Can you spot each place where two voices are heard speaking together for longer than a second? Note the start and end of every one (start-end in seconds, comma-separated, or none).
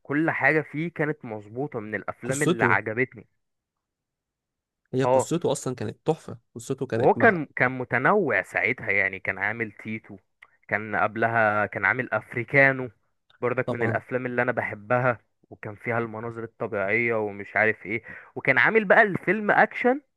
none